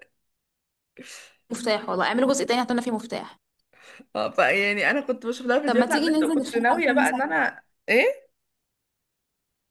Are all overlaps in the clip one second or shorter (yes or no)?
no